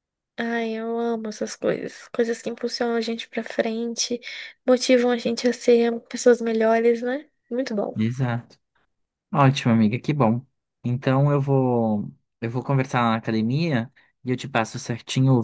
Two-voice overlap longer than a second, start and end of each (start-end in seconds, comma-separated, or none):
none